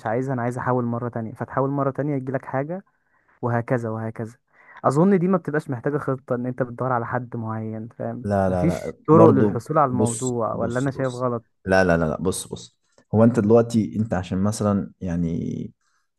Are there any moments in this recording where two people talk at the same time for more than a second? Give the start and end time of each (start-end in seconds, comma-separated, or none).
8.2-11.2